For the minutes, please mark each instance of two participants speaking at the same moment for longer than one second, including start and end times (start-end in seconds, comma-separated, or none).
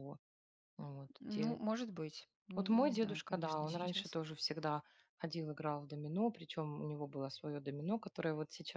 2.5-4.2